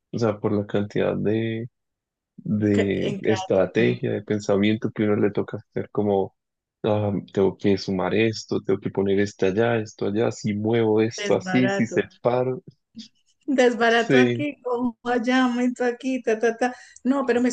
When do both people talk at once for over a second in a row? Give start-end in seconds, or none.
2.7-4.0